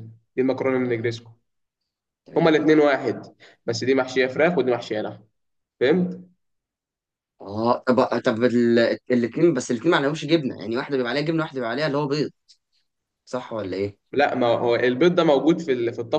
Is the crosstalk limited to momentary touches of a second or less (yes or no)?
yes